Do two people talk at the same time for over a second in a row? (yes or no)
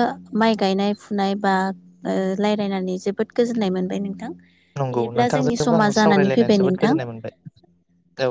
yes